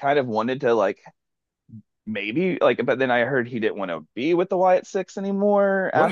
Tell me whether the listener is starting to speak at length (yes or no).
yes